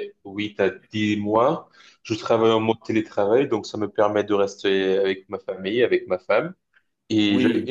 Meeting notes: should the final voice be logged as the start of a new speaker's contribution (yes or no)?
no